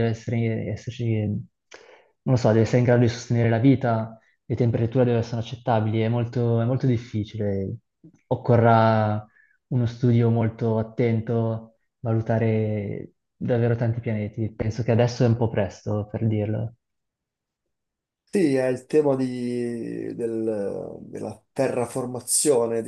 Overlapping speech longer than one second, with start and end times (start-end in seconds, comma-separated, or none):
none